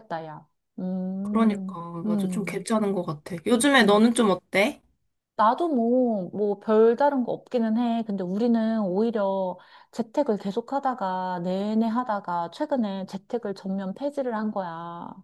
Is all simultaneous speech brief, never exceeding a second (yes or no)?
no